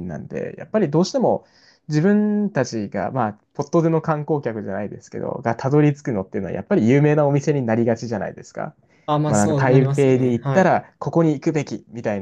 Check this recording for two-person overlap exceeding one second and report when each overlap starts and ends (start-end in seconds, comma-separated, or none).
9.2-10.8